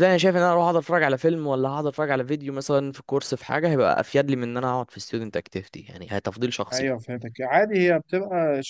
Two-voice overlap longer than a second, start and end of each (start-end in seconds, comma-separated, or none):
none